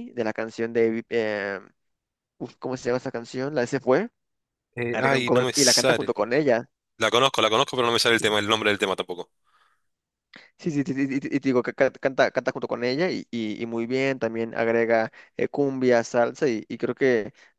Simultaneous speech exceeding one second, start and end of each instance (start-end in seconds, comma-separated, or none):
4.9-6.2